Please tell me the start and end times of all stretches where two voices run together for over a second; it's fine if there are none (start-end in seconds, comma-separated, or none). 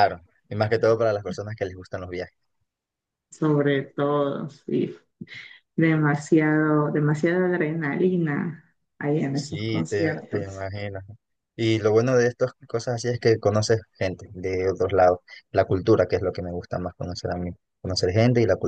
9.3-10.6